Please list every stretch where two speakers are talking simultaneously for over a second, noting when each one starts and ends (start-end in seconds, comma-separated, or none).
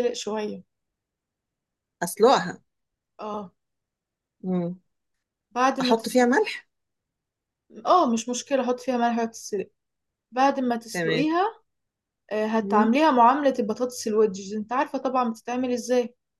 none